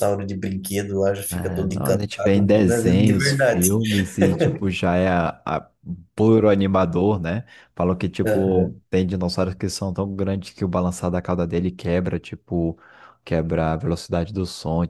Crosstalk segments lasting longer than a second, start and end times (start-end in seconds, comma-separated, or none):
1.3-3.7